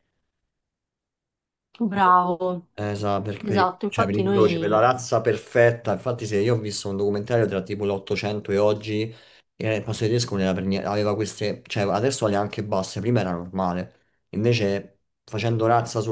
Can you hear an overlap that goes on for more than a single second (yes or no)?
yes